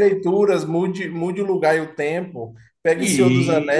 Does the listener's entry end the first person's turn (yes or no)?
no